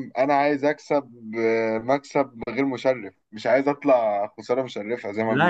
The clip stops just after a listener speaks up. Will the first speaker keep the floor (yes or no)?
no